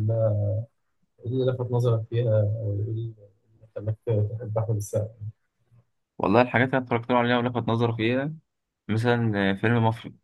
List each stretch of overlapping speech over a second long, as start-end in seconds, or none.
none